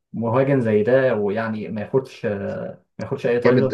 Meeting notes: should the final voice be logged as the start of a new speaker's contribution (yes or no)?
yes